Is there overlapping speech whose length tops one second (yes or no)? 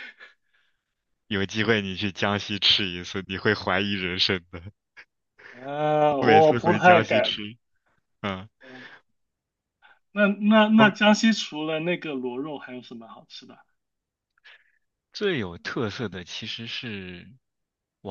yes